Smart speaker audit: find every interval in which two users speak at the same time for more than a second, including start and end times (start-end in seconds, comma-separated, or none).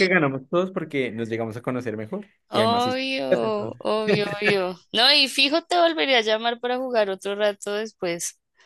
2.5-3.8